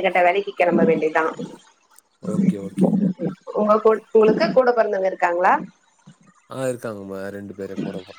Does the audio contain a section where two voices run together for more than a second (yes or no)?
no